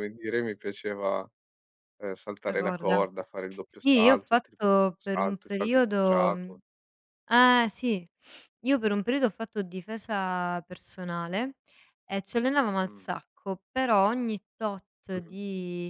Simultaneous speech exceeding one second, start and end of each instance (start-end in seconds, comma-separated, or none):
3.8-6.6